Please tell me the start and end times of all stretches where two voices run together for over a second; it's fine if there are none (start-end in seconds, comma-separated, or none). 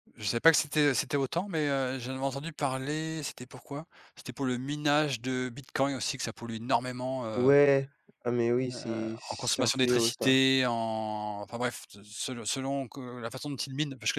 8.6-10.4